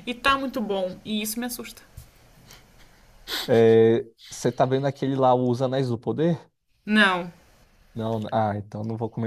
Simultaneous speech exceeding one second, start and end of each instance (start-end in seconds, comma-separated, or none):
none